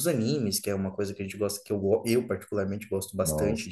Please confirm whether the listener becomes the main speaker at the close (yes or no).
yes